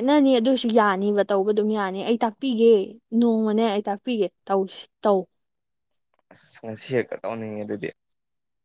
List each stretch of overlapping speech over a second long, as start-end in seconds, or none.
none